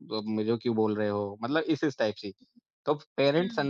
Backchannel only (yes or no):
yes